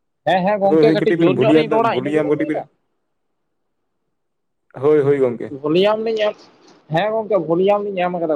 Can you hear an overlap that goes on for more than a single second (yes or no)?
yes